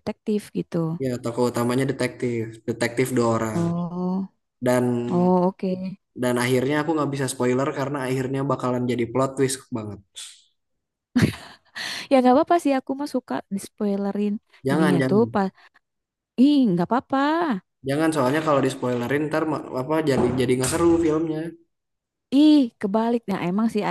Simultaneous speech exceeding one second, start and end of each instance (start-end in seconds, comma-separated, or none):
none